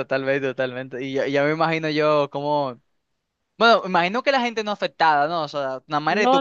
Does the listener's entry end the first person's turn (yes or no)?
yes